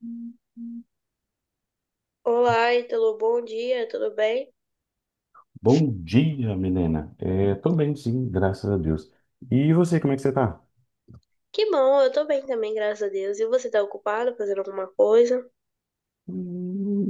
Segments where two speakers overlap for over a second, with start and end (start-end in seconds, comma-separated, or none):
none